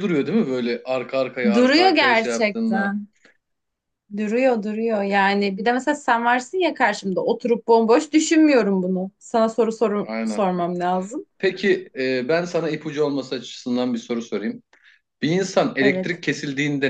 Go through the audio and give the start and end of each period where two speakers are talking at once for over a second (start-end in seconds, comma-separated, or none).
1.5-3.0